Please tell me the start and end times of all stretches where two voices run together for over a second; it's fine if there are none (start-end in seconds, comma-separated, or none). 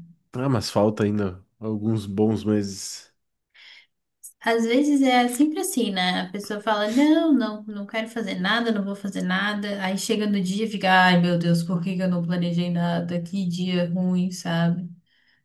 none